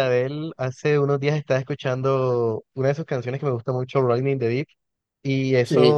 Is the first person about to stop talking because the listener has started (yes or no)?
no